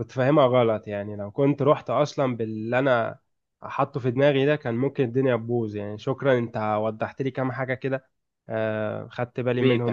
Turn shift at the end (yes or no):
yes